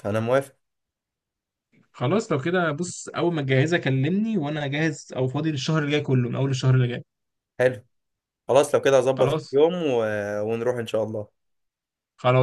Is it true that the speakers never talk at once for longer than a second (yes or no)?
yes